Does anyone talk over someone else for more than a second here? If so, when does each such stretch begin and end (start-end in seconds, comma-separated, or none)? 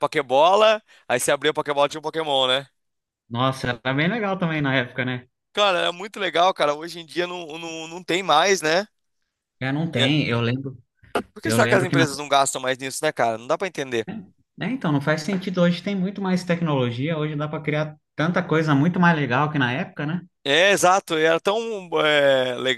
none